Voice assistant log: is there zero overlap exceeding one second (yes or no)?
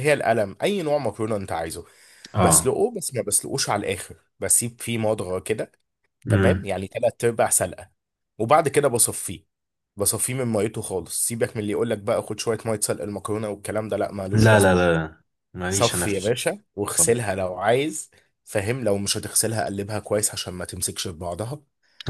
yes